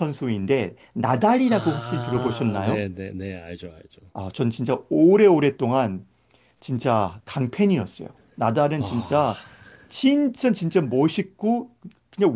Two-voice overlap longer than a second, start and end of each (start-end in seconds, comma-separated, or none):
1.5-2.9